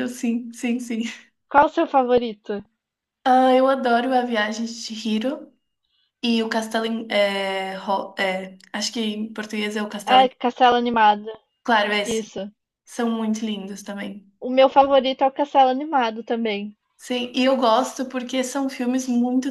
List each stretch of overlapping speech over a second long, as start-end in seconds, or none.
none